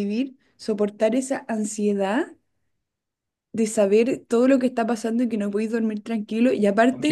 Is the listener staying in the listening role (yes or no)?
yes